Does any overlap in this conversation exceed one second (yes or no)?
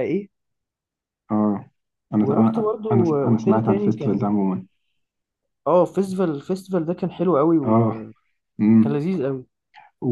yes